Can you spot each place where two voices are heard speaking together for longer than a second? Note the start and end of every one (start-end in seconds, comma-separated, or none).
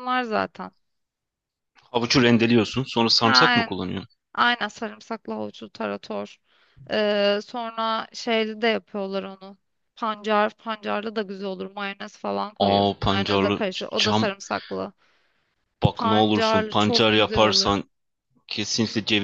12.6-14.2, 15.9-17.8